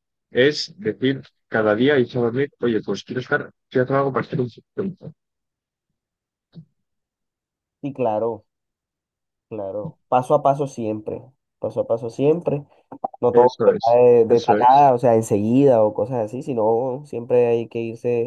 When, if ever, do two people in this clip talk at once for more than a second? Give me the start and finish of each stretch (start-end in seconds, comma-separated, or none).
13.3-14.9